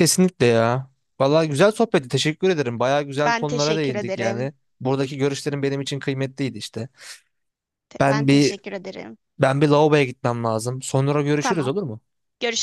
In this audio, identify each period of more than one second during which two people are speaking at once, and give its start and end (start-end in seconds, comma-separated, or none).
3.2-4.5